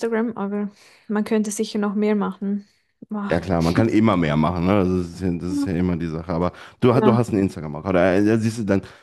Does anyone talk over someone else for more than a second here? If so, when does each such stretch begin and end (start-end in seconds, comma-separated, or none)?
none